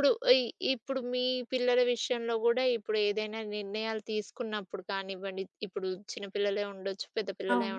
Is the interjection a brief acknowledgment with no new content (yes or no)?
yes